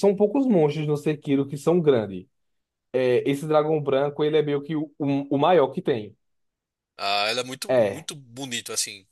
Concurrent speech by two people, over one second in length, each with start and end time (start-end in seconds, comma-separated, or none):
none